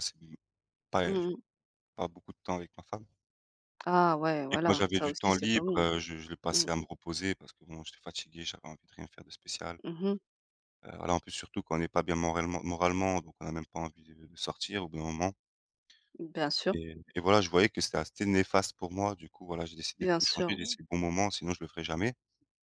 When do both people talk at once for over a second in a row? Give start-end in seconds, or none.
4.5-5.8